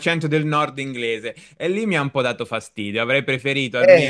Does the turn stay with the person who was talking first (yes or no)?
yes